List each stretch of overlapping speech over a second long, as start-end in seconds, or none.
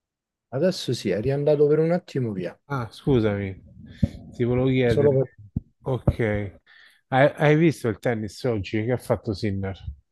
none